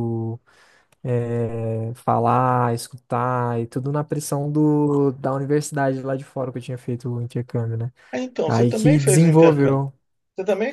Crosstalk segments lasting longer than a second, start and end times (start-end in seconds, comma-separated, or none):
8.4-9.8